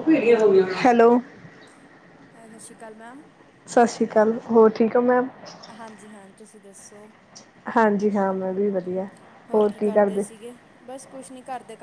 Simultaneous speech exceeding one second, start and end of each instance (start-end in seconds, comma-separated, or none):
none